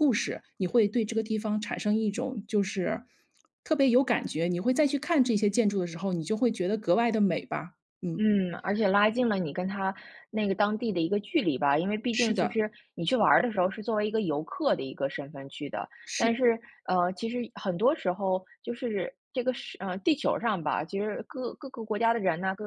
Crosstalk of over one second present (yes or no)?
no